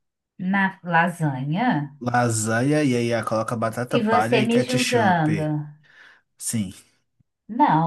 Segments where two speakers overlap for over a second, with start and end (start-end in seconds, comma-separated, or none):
3.9-5.5